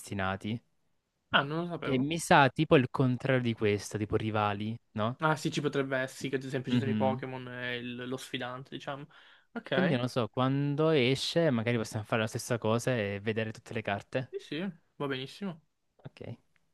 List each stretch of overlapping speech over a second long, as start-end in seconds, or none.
none